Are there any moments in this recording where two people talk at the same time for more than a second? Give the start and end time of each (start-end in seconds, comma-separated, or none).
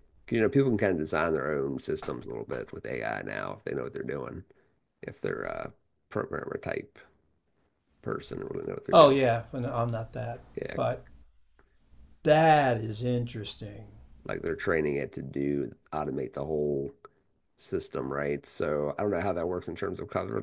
none